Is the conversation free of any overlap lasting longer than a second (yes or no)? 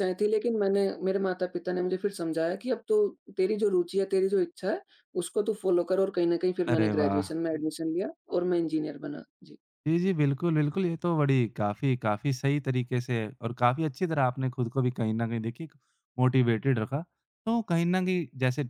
yes